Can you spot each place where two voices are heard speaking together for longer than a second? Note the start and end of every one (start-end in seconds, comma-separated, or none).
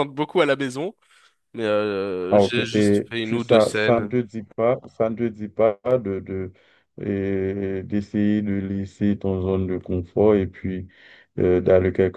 2.3-4.2